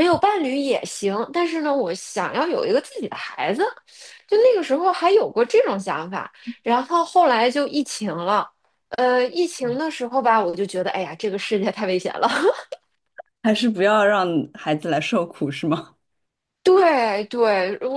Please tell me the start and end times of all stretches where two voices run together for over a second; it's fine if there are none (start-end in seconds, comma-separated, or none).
none